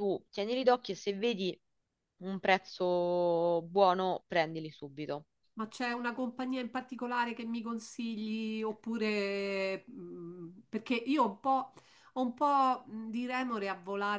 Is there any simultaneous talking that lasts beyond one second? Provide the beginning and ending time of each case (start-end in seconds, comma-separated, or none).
none